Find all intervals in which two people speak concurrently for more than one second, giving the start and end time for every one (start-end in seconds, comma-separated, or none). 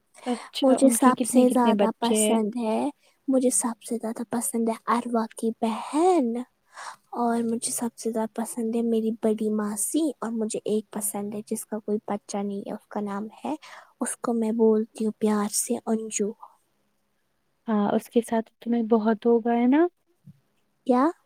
0.6-2.4